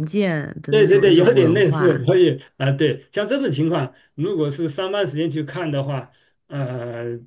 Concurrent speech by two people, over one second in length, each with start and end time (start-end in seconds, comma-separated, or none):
0.7-2.1